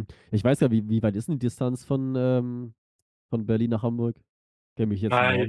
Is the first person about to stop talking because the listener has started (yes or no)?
yes